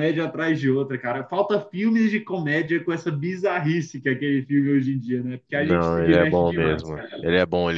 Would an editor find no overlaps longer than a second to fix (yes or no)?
no